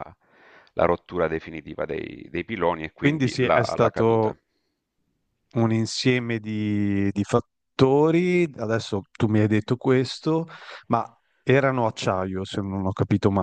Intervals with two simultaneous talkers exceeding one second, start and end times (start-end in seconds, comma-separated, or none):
3.0-4.4